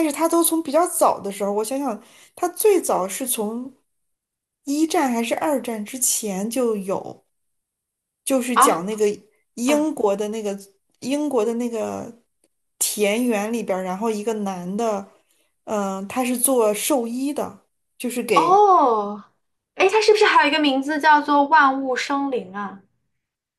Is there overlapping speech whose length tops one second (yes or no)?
no